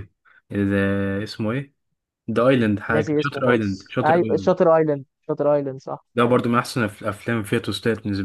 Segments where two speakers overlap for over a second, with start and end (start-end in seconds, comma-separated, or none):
2.9-4.5